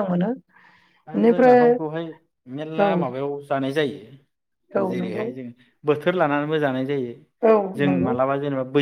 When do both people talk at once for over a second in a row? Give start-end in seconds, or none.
none